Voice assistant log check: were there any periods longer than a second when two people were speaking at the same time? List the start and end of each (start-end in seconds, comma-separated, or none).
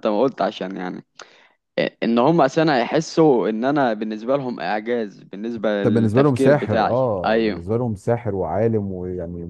5.8-7.6